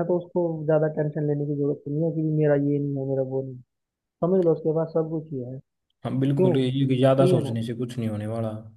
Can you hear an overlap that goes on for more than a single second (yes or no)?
yes